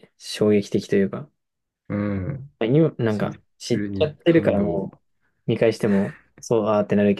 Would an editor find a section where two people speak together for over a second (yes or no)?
yes